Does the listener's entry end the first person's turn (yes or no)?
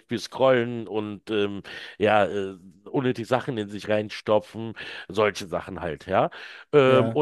no